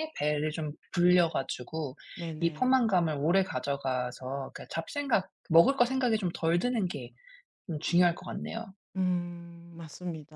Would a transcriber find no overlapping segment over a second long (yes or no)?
yes